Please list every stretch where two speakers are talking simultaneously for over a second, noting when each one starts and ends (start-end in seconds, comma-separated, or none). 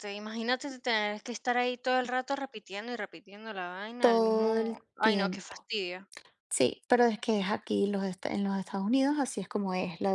4.0-5.7